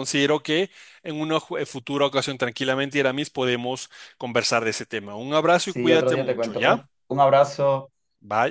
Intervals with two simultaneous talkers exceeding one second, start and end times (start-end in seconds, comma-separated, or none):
5.6-6.9